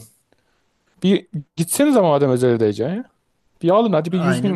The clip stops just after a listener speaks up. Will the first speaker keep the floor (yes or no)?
yes